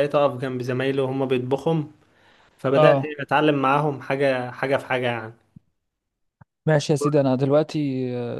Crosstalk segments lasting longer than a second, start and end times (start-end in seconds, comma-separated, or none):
none